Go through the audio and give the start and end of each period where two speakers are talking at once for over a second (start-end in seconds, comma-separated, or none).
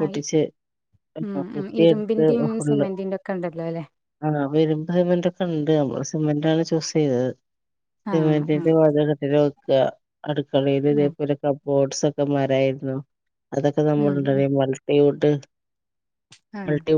none